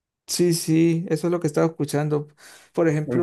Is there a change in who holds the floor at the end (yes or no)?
no